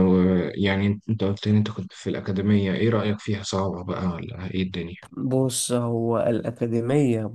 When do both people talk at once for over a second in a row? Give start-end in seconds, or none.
none